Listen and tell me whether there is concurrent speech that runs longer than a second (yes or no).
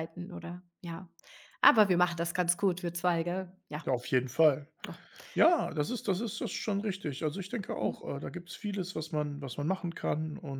no